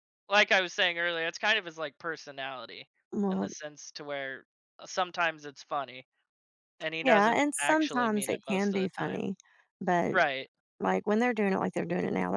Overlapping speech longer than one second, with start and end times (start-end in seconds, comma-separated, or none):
7.0-9.3